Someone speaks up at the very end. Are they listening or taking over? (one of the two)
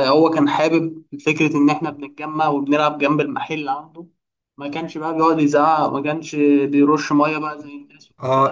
taking over